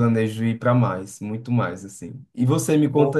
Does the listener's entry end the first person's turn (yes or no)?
no